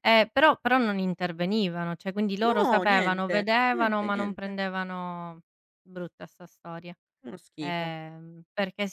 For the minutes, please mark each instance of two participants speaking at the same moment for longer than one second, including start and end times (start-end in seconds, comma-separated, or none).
2.4-4.6